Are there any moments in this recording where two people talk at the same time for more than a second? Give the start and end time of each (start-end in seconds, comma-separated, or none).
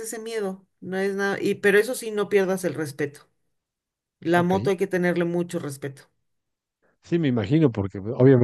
none